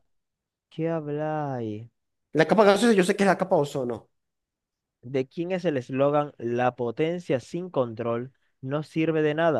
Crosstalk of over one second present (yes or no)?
no